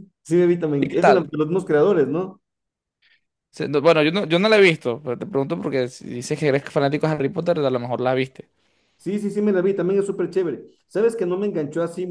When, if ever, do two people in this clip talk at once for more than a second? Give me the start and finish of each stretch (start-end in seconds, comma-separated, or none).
none